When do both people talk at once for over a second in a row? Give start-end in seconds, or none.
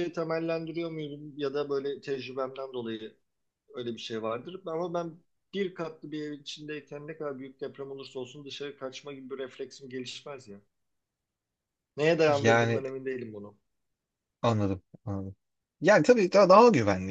none